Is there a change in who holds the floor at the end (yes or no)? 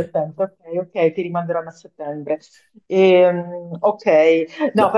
no